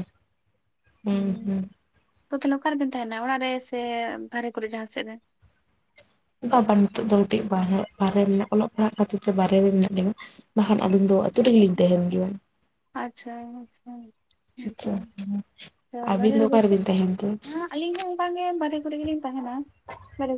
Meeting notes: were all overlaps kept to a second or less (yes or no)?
yes